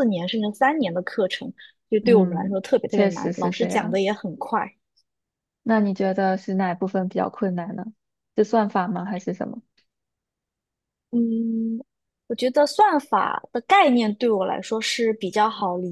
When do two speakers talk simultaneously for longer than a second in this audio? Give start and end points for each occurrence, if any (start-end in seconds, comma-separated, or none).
2.0-4.0